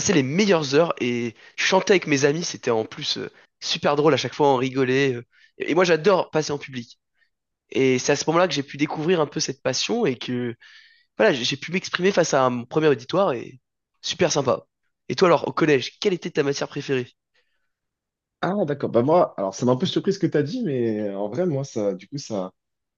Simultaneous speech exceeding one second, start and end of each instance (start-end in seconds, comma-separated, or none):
none